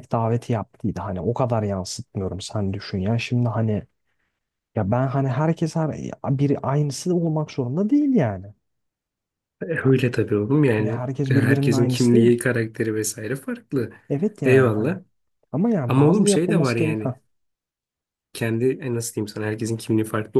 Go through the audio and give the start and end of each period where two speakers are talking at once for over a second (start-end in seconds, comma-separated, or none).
10.6-12.4, 15.9-17.2